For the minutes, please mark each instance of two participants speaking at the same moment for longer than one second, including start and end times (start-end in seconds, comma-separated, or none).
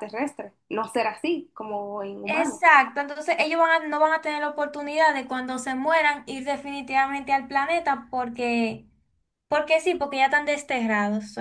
none